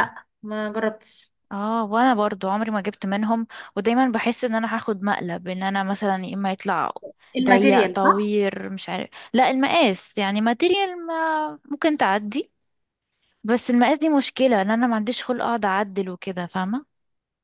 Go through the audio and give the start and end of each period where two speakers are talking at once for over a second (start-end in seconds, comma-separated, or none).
none